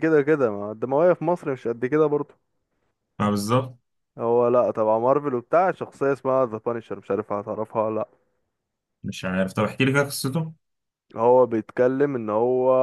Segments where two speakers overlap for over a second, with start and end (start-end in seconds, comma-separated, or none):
none